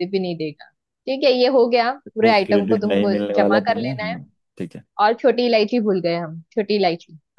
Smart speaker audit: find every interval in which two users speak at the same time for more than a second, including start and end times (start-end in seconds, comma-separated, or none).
2.0-4.2